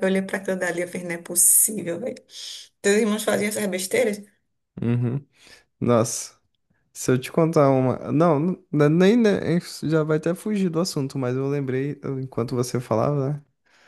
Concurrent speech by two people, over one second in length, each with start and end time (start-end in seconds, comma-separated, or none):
none